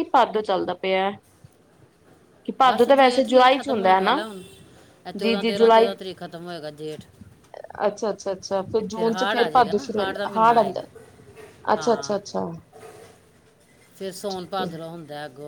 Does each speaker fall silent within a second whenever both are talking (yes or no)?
no